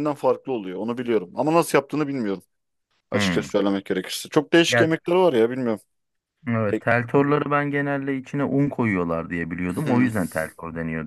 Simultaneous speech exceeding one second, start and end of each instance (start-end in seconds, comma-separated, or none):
none